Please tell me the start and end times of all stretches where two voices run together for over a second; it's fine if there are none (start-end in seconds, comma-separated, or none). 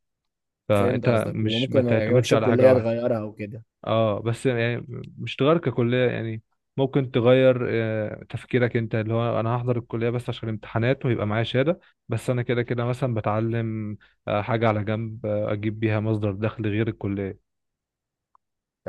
0.7-3.0